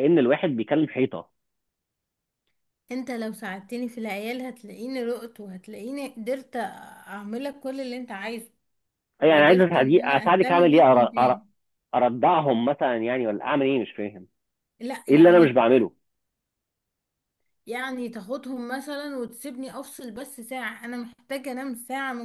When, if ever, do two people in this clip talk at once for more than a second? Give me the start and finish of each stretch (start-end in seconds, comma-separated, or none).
9.3-11.4